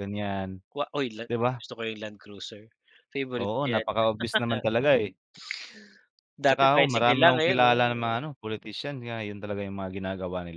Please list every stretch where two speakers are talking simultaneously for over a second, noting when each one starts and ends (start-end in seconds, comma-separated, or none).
6.5-8.1